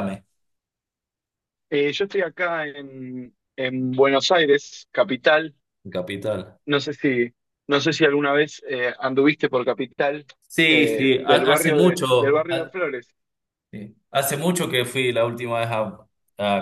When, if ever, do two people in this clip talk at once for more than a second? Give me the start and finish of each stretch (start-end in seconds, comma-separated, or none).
10.7-12.8